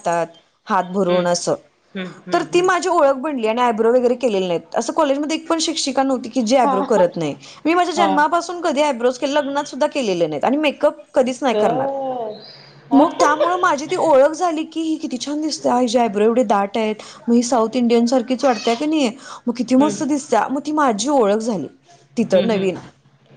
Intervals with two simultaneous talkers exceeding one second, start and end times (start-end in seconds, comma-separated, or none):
none